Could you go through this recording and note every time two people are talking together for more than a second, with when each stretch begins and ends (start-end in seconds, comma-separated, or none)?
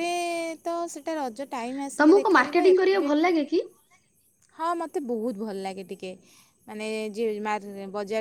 2.0-3.4